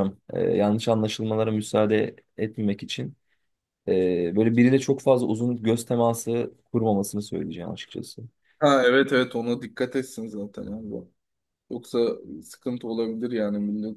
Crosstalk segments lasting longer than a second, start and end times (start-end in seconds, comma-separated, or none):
none